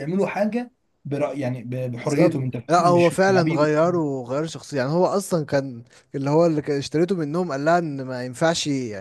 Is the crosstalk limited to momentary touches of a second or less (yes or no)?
no